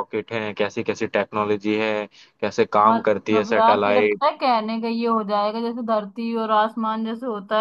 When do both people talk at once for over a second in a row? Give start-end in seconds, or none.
2.9-4.3